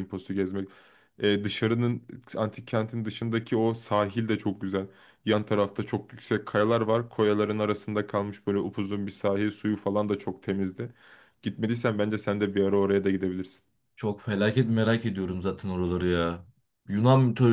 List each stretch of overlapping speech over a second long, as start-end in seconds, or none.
none